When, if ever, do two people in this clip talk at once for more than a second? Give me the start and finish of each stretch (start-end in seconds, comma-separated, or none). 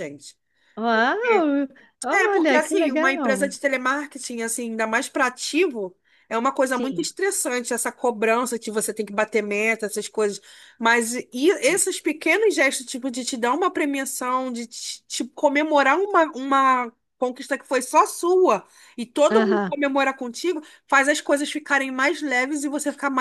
2.1-3.5